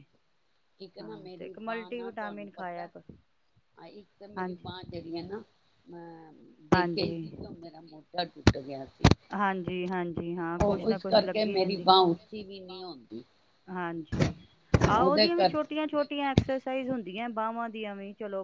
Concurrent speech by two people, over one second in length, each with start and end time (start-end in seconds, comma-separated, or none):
1.0-2.9, 10.7-13.2